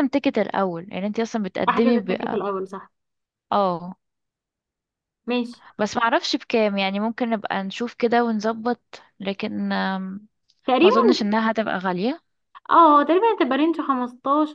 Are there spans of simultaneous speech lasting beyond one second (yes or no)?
no